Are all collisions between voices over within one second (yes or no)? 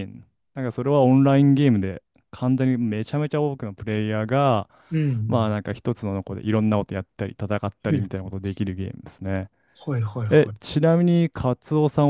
yes